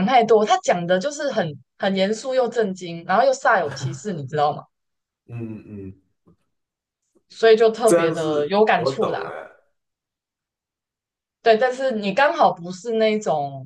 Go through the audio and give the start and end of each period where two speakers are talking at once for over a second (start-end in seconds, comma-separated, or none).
7.8-9.3